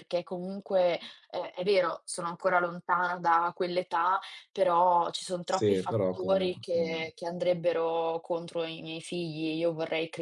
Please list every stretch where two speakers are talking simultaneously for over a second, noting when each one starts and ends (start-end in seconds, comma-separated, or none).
5.4-7.0